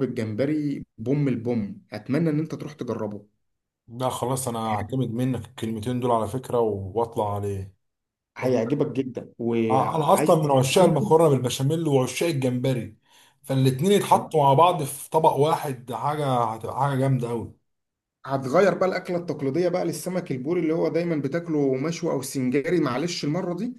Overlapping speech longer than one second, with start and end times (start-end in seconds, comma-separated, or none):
9.7-11.2